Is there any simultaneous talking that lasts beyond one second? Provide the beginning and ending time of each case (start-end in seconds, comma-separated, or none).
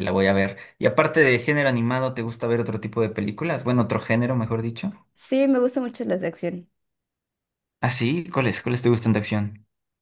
none